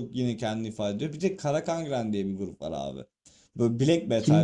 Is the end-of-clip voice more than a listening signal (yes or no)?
no